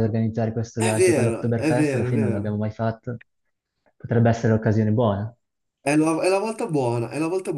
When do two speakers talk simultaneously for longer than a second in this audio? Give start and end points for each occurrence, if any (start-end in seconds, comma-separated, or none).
0.8-2.6